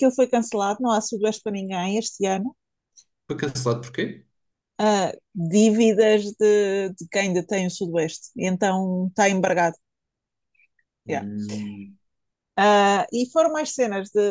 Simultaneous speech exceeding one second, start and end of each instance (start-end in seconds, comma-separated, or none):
none